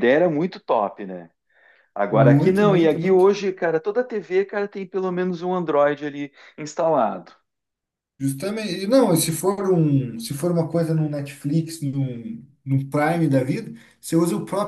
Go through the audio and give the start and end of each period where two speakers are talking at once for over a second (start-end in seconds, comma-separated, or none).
2.1-3.3